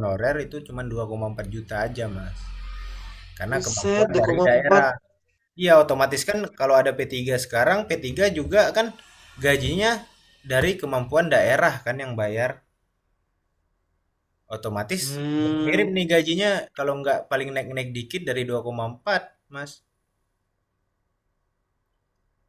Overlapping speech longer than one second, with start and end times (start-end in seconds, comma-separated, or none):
3.5-4.8